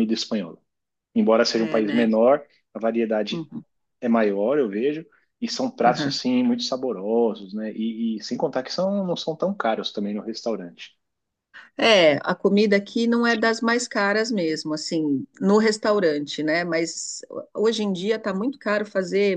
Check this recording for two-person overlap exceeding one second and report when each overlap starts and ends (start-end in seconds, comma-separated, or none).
none